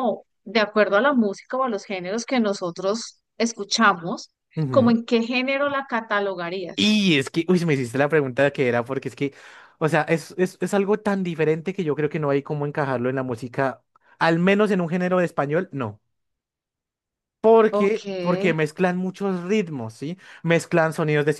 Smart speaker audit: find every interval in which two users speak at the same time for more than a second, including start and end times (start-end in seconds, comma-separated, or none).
none